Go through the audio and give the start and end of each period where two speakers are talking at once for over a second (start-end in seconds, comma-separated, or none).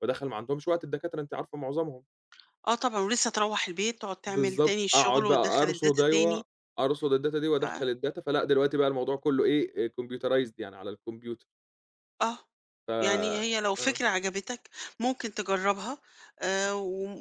4.3-6.4